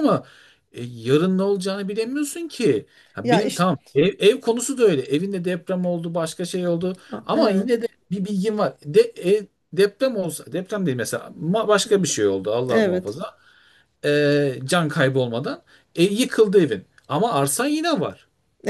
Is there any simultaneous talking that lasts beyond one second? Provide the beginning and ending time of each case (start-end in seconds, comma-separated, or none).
none